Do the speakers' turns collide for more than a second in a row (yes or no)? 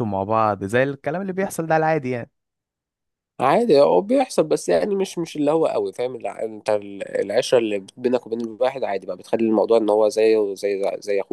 no